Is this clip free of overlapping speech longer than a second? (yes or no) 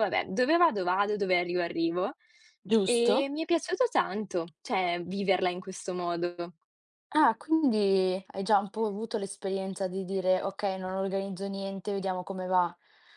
yes